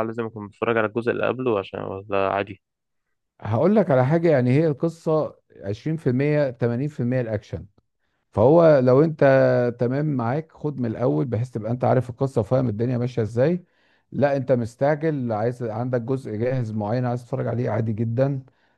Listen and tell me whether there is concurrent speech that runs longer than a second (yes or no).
no